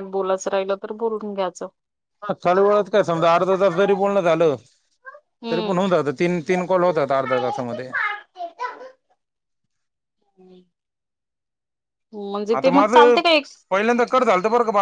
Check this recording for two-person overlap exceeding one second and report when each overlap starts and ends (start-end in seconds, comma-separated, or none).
none